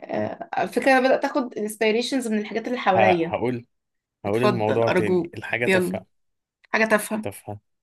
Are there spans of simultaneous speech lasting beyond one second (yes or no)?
yes